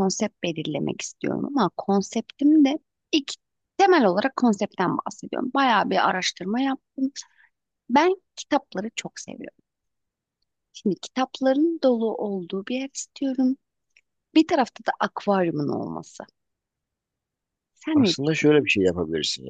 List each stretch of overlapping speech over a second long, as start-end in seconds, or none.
none